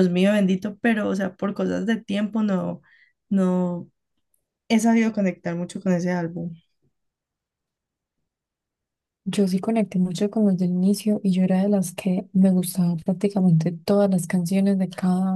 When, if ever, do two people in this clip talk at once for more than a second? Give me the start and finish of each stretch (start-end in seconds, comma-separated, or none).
none